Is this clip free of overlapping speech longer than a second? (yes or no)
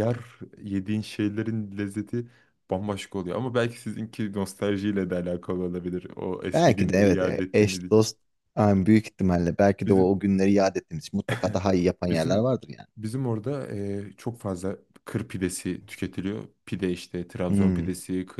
no